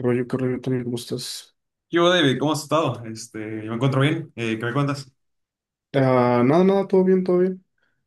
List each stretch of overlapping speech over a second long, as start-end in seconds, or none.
none